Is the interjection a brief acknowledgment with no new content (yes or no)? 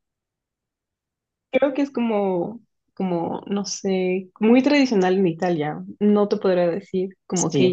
no